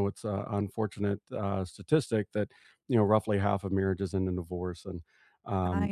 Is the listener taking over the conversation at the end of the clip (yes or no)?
no